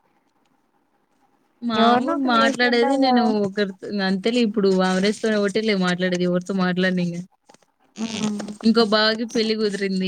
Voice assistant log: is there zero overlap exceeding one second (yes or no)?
no